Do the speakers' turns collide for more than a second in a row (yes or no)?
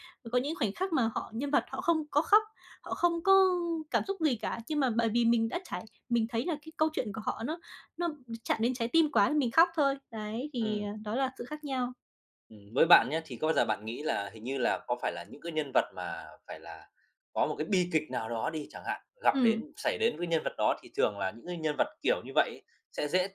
no